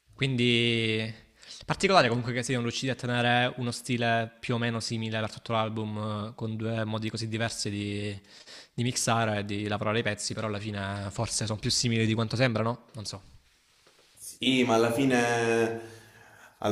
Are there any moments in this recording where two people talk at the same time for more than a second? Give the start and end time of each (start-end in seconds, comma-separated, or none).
none